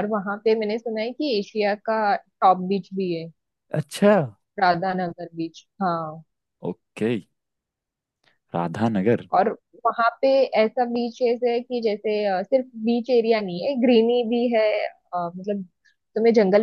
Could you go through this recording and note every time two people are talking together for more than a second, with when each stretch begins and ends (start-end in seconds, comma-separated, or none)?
none